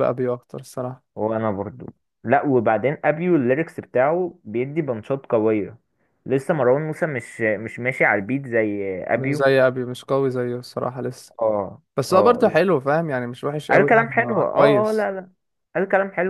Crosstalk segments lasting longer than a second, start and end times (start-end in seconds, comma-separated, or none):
13.7-15.1